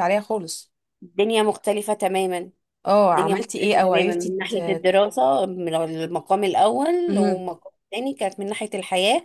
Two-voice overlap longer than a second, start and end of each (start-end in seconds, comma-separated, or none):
3.1-4.6